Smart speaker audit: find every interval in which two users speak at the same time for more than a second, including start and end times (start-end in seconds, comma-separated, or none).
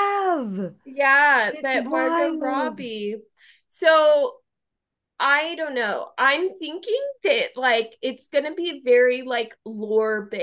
1.5-2.8